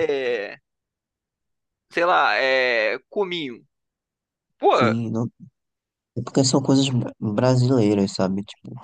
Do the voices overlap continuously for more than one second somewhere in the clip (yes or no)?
no